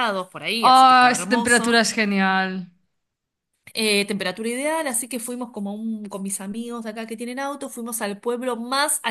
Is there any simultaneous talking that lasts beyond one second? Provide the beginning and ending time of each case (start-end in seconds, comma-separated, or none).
0.6-1.8